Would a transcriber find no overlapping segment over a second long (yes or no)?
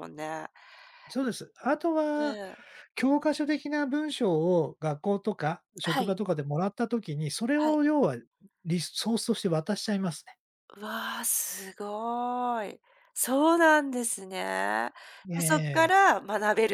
yes